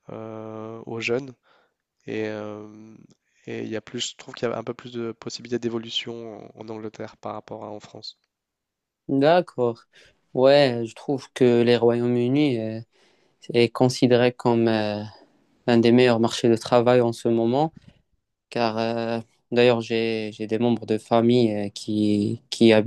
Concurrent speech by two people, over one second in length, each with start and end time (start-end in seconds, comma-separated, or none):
none